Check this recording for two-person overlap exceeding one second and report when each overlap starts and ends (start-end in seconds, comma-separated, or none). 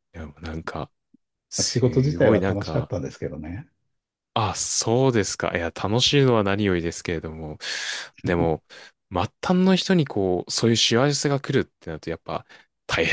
1.6-2.9